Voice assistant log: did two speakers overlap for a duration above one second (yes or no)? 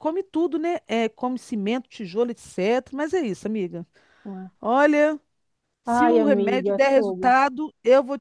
yes